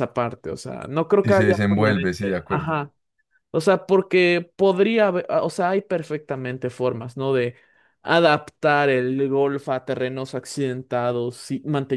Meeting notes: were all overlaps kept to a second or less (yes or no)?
no